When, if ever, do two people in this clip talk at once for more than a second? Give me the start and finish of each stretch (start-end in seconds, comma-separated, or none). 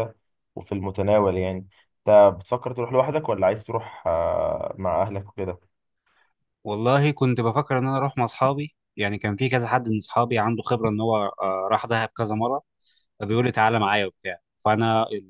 none